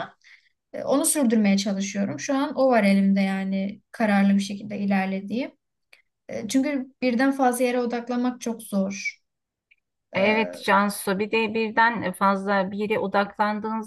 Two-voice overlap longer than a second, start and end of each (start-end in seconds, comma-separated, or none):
none